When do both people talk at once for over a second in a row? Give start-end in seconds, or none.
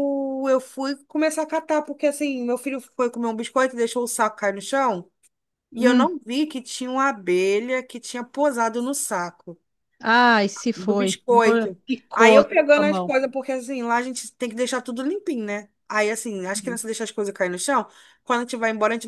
10.8-13.2